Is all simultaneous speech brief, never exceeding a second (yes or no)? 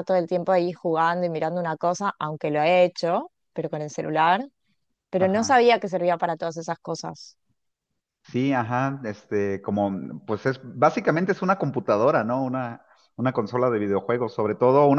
yes